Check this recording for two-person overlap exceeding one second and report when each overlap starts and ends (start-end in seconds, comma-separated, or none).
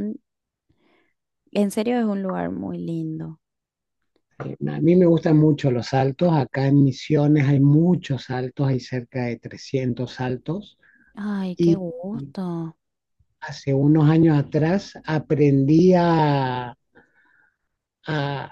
none